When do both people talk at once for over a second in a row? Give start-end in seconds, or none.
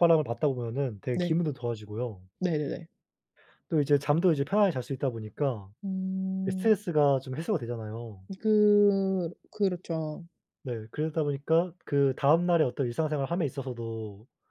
none